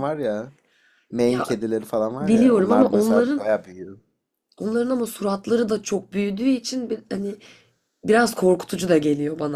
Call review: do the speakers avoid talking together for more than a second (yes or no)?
no